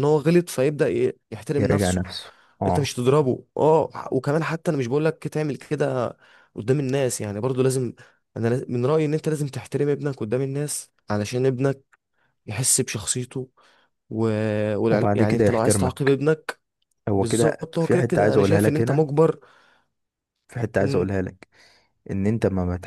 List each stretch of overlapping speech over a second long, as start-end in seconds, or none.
14.9-16.2, 17.1-19.1